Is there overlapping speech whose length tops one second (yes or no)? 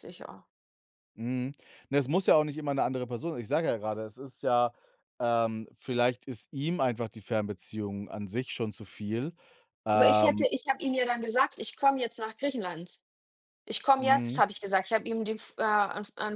no